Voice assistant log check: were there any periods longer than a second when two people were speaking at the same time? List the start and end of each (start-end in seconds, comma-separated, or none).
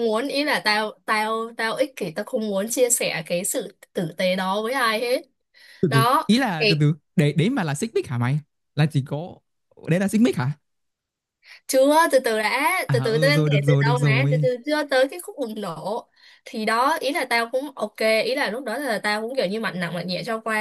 12.9-14.5